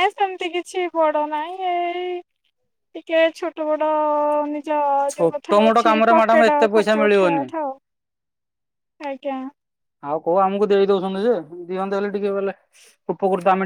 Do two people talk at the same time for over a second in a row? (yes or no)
yes